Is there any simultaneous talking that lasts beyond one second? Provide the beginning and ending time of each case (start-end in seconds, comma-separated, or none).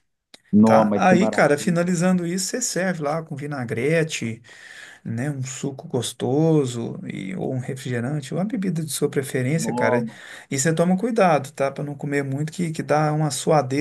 0.6-1.9